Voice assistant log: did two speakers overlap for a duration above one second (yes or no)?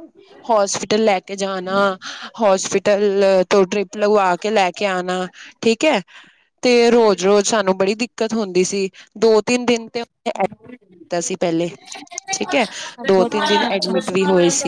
yes